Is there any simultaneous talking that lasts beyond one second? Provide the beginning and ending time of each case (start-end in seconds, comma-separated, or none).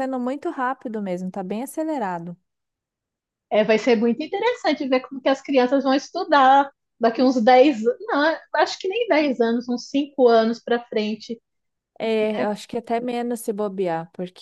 none